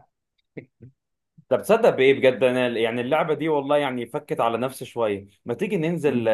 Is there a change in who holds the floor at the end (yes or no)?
no